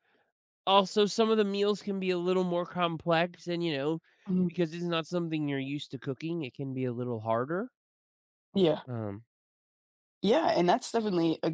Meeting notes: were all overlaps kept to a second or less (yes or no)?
yes